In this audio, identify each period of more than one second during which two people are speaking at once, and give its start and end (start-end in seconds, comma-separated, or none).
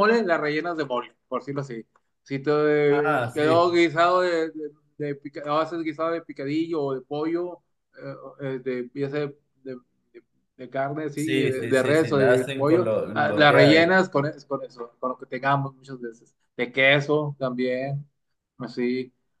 11.1-13.9